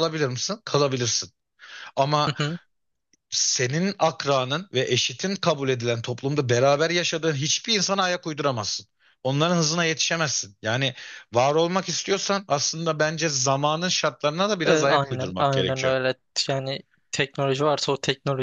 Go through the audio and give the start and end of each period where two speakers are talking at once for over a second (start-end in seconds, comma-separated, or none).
14.6-15.9